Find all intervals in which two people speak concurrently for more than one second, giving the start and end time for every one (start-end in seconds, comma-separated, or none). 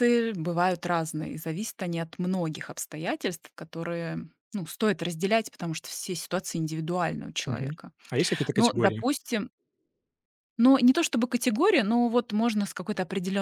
none